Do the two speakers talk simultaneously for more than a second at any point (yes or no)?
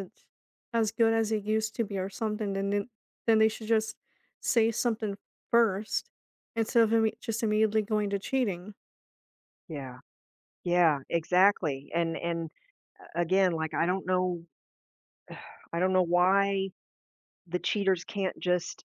no